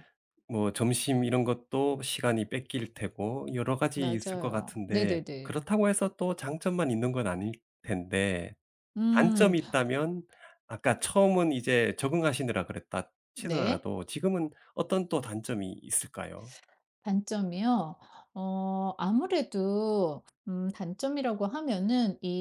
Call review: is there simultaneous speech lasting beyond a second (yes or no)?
yes